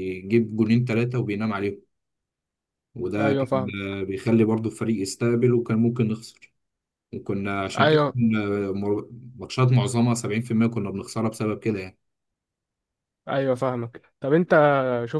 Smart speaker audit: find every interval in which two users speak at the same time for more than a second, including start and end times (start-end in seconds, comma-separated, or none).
none